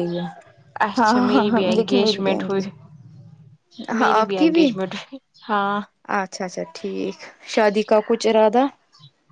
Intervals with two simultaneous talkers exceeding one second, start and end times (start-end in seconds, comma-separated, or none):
1.0-2.6